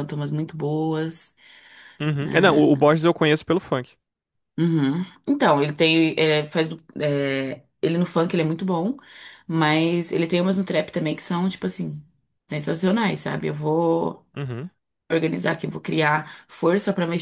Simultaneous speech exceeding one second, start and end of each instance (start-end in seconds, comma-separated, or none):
none